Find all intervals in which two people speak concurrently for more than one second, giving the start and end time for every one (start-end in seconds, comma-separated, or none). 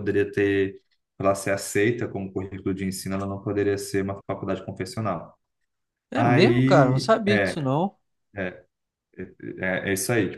6.2-7.7